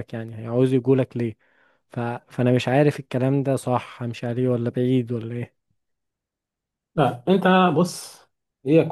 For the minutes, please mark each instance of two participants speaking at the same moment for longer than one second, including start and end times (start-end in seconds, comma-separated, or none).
none